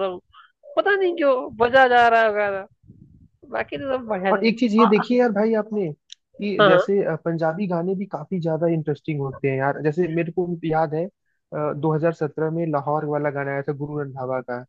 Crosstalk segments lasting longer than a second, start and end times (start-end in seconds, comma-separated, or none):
none